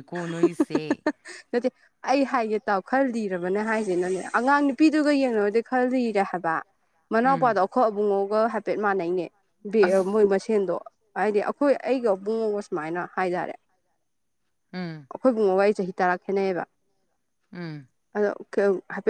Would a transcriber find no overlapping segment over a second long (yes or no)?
yes